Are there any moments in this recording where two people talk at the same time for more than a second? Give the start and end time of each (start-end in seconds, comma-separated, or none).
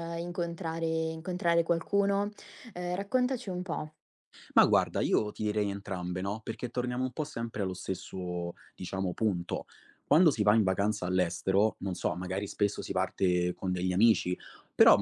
none